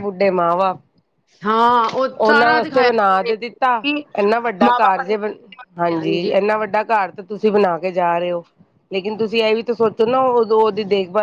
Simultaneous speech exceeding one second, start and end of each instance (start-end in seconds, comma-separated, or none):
2.2-3.7